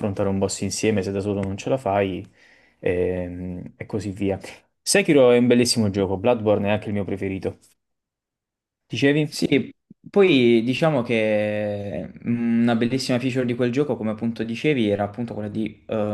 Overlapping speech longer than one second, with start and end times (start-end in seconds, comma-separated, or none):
none